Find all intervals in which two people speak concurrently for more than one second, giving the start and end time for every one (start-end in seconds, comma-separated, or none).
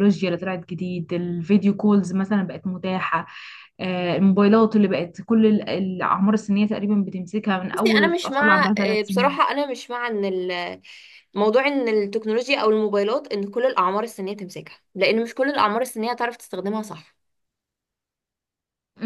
7.7-9.4